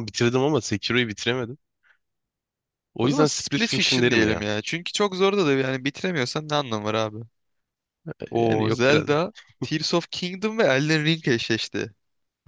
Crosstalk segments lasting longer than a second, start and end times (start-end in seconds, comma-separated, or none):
3.0-4.5